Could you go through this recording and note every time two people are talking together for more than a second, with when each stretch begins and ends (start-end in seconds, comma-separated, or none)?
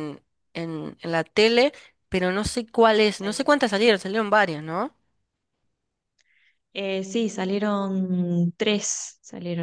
none